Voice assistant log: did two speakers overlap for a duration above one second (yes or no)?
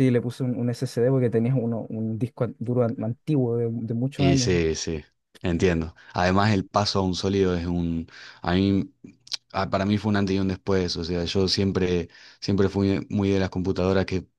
no